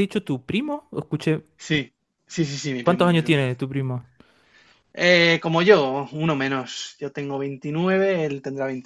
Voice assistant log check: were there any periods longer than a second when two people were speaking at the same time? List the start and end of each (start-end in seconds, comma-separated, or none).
none